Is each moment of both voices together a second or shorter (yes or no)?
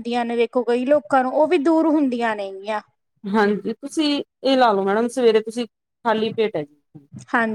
yes